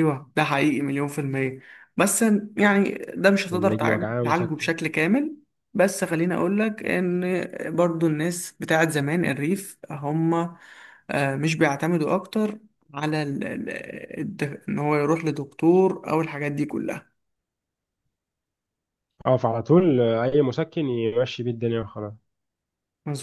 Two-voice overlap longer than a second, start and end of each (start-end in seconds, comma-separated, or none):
3.4-4.7